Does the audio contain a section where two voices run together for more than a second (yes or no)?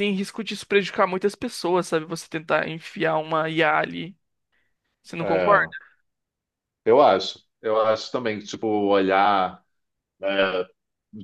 no